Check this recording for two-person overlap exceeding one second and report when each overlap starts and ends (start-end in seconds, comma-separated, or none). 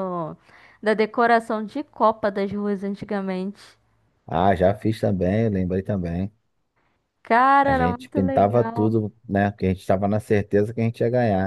7.6-8.9